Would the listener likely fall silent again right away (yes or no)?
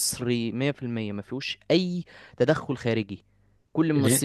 yes